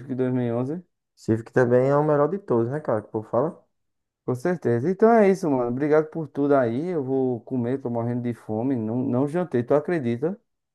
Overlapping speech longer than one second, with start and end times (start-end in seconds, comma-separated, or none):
none